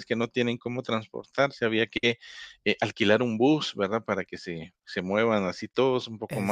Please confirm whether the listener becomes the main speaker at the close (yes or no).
no